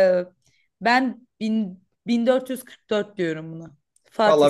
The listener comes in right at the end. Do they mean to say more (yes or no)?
yes